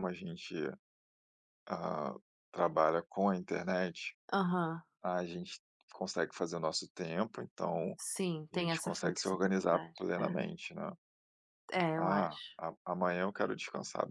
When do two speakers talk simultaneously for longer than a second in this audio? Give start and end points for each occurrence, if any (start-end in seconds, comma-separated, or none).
8.5-10.0